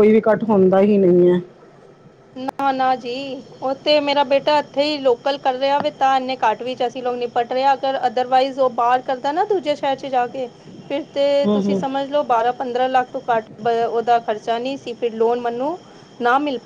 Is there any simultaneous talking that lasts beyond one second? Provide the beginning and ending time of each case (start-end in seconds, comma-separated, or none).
none